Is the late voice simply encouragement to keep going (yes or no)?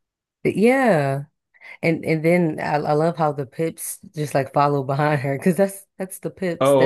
no